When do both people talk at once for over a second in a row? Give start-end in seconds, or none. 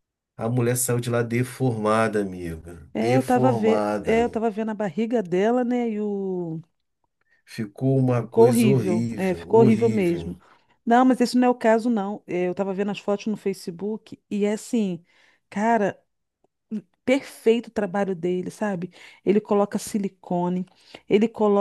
2.9-4.2, 8.2-10.3